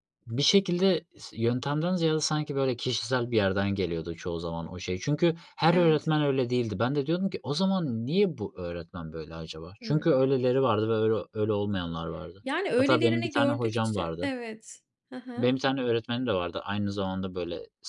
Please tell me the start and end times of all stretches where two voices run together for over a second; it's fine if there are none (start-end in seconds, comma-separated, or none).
12.4-14.3